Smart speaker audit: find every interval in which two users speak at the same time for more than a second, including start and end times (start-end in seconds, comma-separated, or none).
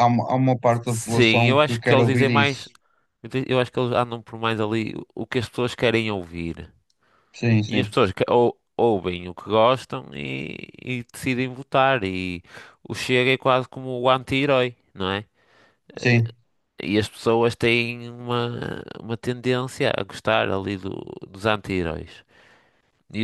0.8-2.7